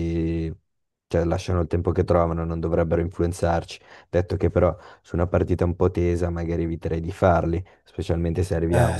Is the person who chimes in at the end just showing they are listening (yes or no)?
yes